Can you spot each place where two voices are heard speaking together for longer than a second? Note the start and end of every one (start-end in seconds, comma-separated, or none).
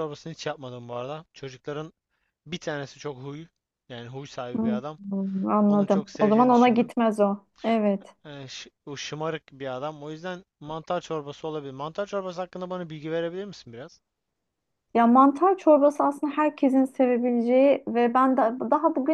5.7-6.9